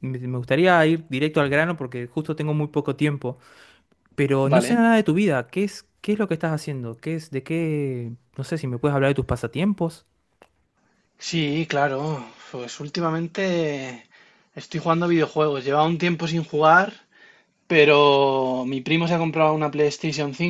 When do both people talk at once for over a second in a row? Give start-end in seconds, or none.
none